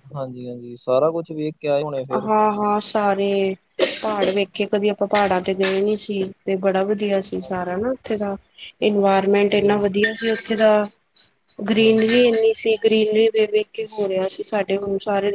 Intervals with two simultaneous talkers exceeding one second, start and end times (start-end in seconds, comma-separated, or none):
none